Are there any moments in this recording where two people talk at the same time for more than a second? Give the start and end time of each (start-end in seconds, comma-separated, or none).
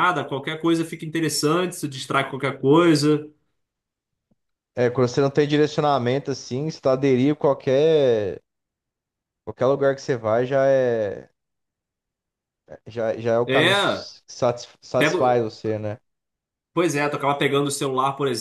none